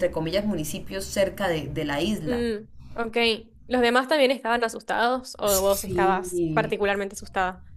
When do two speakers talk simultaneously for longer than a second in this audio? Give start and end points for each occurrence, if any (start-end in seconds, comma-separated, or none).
5.5-6.7